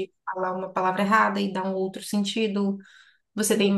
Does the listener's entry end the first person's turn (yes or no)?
no